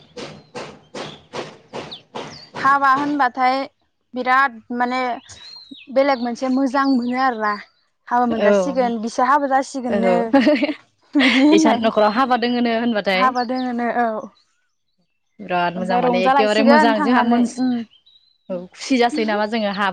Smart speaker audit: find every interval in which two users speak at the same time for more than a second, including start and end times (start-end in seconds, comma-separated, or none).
15.8-17.5